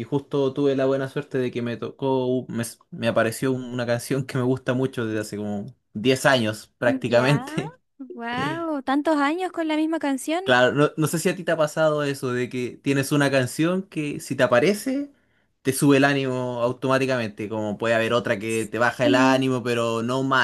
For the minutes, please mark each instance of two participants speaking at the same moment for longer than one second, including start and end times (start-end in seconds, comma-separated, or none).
none